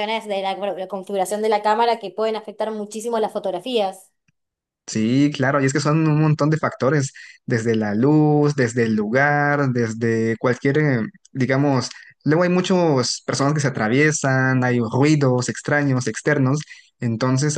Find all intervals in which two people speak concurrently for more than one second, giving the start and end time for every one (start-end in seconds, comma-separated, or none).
none